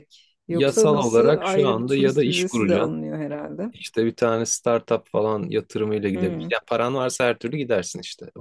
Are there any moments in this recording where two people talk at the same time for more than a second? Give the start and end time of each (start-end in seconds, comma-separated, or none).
0.5-3.0